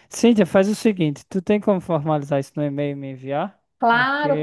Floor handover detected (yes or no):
yes